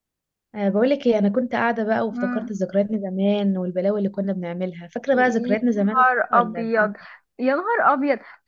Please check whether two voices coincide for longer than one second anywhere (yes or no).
yes